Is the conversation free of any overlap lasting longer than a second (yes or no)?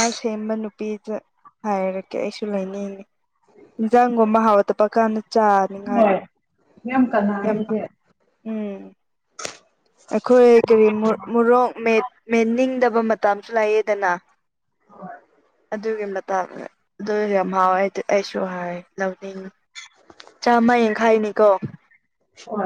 yes